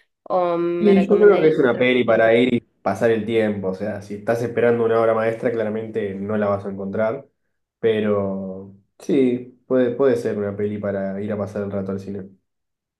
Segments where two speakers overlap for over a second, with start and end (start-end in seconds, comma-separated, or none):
0.8-2.2